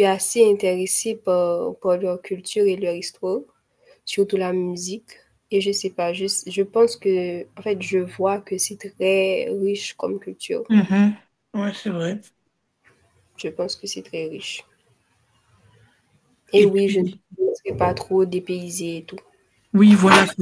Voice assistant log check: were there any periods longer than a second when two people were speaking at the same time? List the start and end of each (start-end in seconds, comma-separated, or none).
none